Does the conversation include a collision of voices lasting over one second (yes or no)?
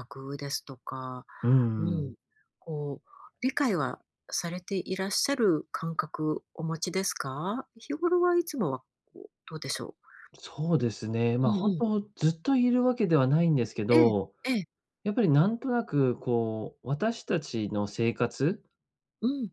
no